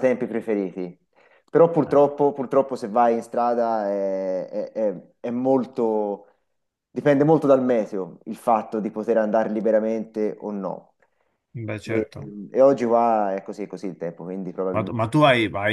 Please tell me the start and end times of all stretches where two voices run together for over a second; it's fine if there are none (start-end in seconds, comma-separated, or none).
none